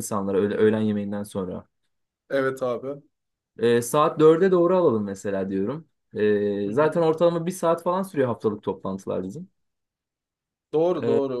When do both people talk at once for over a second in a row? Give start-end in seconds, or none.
none